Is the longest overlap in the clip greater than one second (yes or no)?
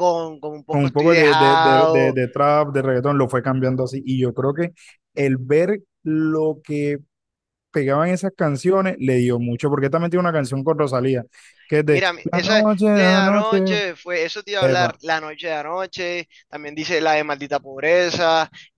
yes